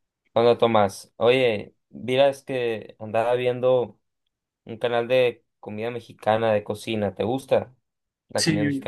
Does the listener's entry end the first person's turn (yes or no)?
yes